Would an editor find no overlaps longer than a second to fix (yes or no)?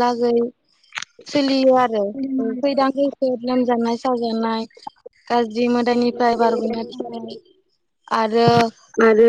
no